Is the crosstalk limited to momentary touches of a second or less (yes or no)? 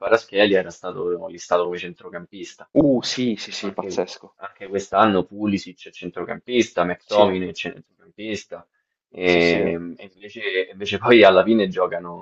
yes